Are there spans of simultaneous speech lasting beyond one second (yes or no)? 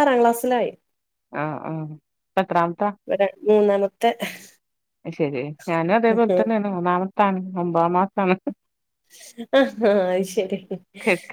no